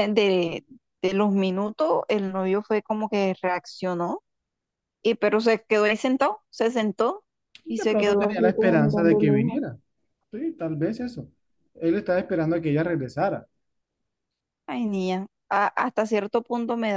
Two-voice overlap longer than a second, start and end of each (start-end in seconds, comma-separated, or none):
7.7-9.6